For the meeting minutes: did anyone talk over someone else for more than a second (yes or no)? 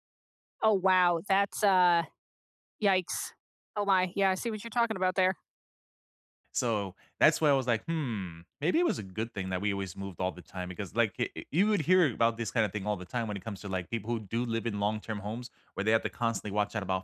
no